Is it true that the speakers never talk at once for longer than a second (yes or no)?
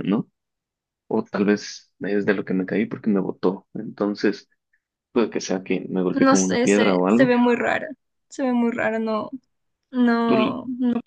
no